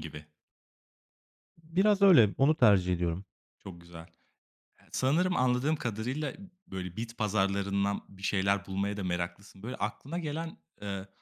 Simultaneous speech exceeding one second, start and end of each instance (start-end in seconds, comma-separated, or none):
none